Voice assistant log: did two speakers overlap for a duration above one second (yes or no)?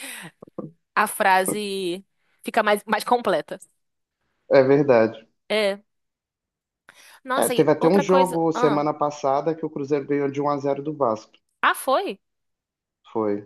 yes